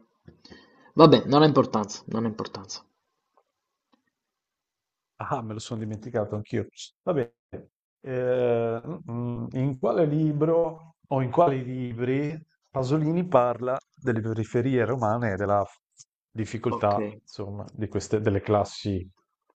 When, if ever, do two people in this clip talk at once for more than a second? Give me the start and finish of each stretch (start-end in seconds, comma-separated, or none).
none